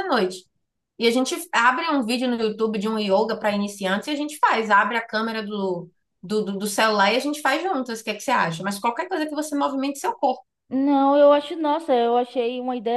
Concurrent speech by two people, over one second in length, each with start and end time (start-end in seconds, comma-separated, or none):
none